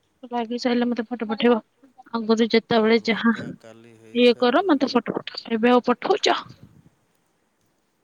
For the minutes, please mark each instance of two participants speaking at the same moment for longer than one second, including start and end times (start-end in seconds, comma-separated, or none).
3.1-4.9